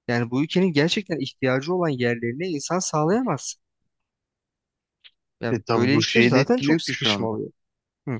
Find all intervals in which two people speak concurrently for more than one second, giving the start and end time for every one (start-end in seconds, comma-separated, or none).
5.5-7.4